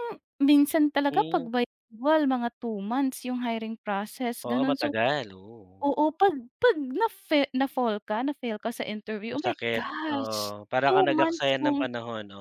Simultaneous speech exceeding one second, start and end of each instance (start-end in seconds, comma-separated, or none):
9.3-11.9